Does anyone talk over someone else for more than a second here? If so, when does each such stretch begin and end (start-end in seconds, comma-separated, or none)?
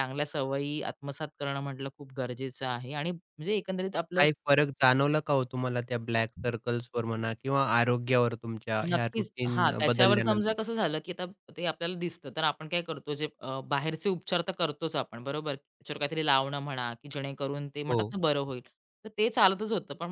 8.9-10.6